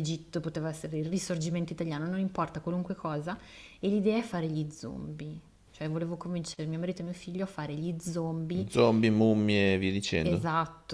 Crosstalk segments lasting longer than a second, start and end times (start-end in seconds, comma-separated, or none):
none